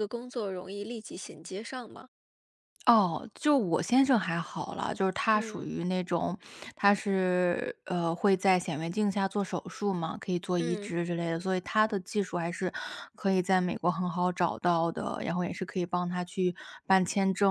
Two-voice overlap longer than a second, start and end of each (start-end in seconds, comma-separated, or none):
none